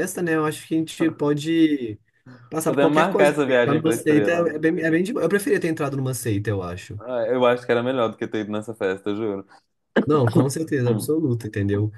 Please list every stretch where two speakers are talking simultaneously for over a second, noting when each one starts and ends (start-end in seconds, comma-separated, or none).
2.6-4.6